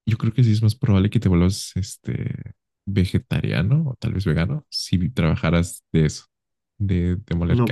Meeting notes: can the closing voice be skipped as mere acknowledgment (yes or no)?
no